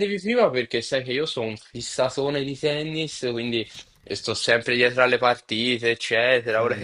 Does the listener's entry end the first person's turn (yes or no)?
no